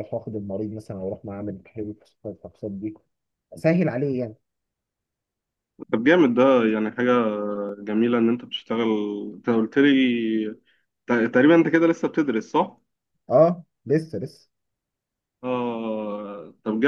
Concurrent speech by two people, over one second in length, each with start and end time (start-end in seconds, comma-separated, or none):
none